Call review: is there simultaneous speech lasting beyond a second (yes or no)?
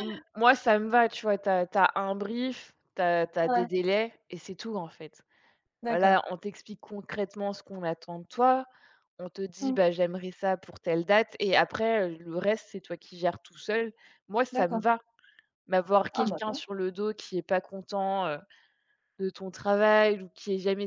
no